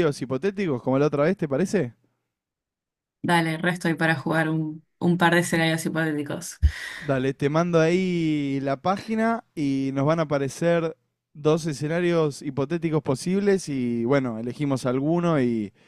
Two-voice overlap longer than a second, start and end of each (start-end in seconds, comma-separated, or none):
none